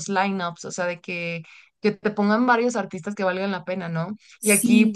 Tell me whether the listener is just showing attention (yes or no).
yes